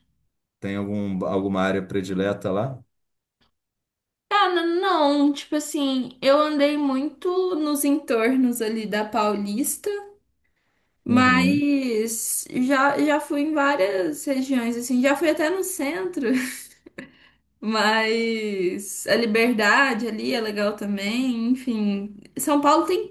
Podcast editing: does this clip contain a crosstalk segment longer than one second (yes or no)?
no